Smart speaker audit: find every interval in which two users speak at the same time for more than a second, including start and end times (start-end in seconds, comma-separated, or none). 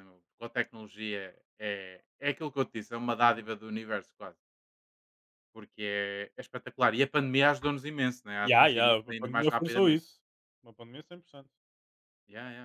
8.4-10.0